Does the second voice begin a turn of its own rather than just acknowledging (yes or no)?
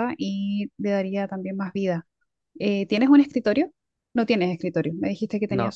no